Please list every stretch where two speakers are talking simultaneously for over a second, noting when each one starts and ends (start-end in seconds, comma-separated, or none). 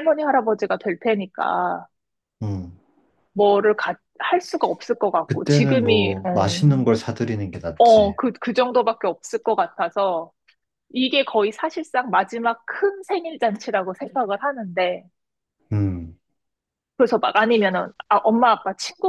5.3-6.7